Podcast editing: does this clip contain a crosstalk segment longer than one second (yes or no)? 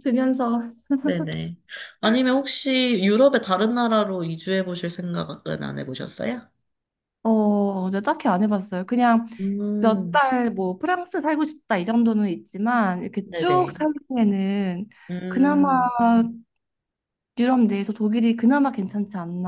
no